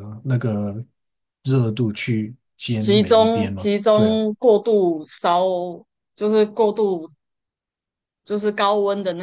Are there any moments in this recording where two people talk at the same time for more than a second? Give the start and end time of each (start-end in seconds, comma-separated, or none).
2.8-4.2